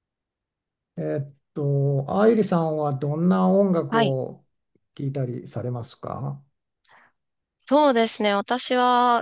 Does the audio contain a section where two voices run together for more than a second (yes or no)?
no